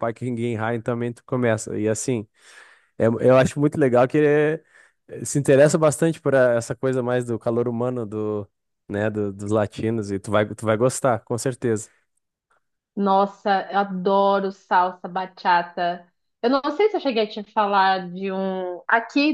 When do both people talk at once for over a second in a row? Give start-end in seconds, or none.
none